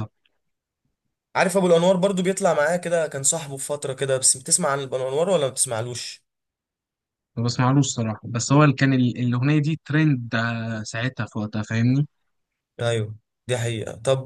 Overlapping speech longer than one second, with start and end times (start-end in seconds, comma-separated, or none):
none